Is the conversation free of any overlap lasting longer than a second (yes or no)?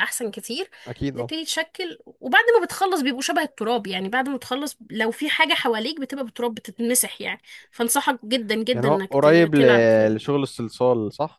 no